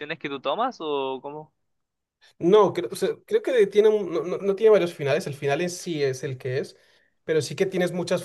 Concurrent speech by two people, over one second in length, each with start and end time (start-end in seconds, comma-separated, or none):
none